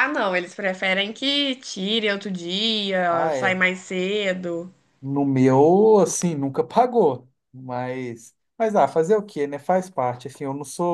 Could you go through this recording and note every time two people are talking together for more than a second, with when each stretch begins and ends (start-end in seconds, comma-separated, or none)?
none